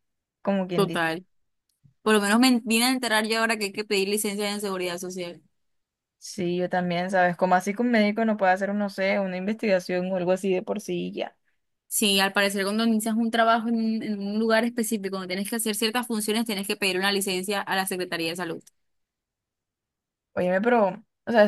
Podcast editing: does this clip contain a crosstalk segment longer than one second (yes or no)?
no